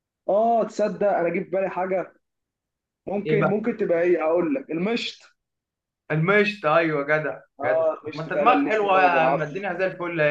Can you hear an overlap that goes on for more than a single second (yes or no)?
yes